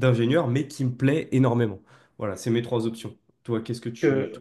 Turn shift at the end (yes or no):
yes